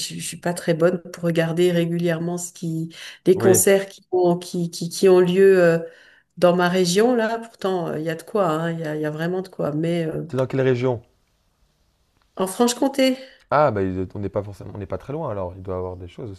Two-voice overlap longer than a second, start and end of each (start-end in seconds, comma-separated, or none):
none